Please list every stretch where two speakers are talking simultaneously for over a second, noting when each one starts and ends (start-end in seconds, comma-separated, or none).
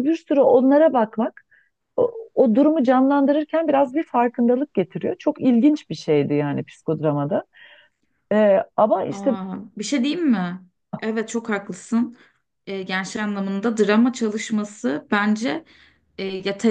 none